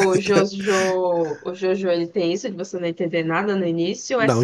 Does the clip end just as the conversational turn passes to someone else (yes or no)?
yes